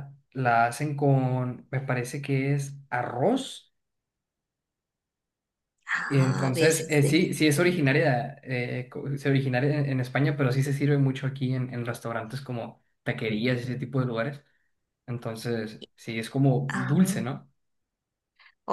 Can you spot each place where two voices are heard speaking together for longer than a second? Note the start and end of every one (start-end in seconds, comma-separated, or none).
6.1-7.9